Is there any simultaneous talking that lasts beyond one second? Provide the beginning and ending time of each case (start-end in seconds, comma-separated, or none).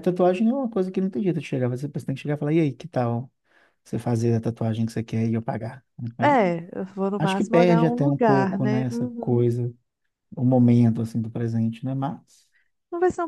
7.2-9.5